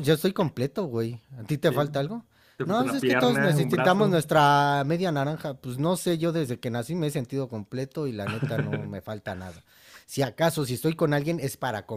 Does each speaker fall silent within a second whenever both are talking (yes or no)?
no